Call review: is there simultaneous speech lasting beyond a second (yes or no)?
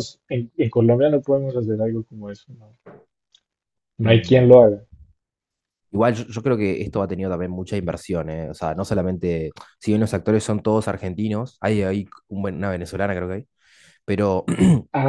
no